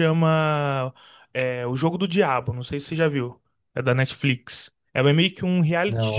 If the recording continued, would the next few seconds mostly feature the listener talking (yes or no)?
no